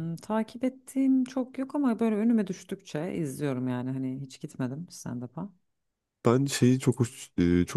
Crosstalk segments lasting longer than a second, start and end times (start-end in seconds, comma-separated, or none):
none